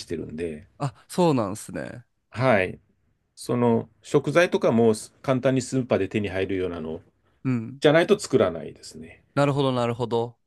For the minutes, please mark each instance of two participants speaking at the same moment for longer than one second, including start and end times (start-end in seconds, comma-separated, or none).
none